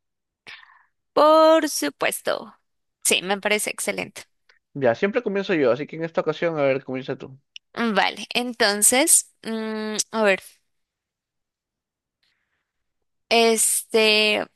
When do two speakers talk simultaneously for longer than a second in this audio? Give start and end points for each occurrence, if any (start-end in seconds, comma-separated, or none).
none